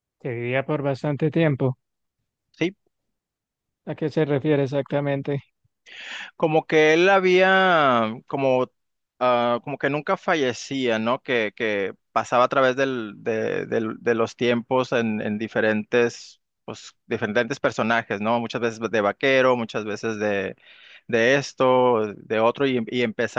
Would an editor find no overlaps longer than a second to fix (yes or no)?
yes